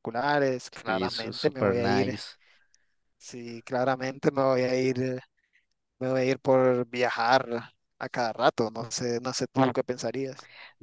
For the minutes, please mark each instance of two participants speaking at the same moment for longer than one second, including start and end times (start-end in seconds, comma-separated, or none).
0.8-2.1